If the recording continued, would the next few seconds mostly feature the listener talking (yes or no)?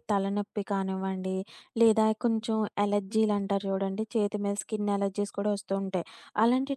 no